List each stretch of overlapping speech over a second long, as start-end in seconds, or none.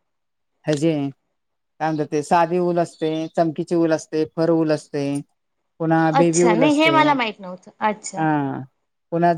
6.2-8.2